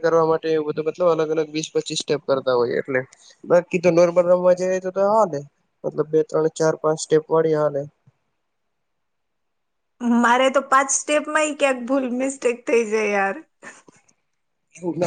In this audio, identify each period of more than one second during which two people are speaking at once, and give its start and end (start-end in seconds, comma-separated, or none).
none